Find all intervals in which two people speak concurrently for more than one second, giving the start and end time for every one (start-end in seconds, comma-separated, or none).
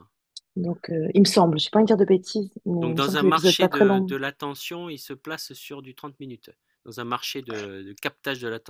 2.8-4.2